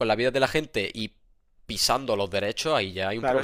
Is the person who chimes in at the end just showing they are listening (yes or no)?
no